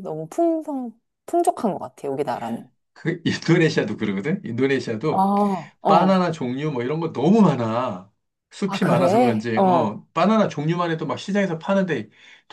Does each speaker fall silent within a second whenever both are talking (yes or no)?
no